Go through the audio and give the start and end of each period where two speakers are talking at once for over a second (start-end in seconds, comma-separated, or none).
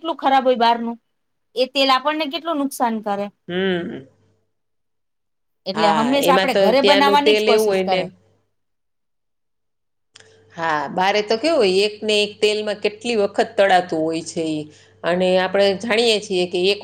5.8-8.0